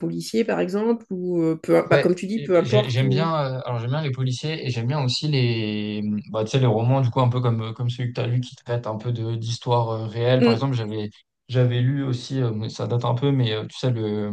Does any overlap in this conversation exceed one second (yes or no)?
yes